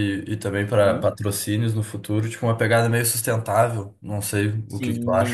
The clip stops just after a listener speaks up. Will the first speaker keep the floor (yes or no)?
no